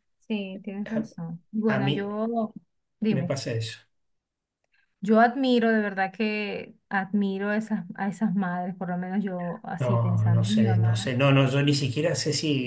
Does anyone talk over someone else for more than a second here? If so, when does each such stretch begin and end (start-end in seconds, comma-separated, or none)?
9.8-11.1